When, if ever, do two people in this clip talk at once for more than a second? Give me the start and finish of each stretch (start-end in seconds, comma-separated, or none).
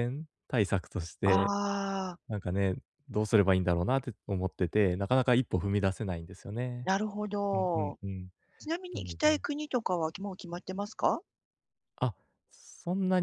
none